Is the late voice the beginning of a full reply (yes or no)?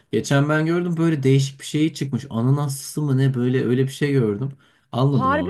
no